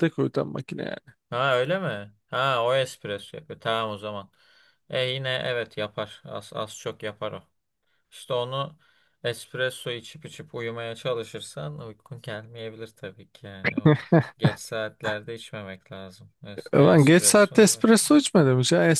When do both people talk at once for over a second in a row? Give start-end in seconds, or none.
16.6-18.1